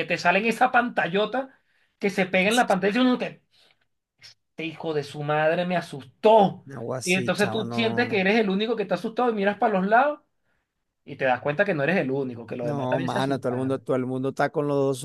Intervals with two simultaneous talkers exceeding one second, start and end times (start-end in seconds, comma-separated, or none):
7.0-8.3, 12.6-13.8